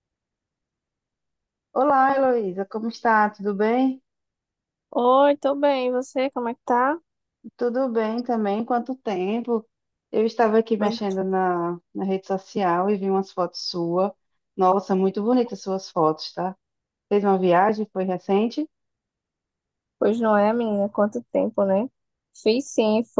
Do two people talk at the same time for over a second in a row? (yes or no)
no